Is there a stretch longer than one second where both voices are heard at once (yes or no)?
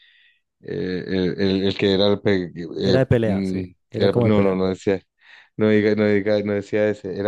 yes